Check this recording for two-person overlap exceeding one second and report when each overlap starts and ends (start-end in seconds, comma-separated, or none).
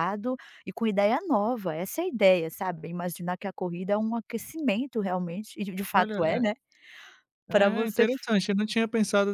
none